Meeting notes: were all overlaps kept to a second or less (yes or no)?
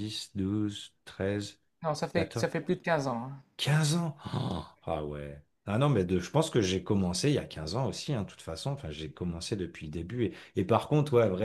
yes